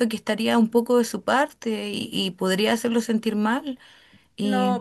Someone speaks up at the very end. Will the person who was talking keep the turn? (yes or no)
no